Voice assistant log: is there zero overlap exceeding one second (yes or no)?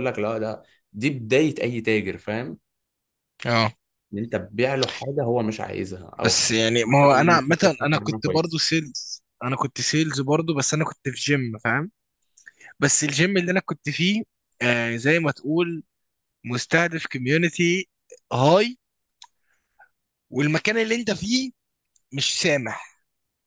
no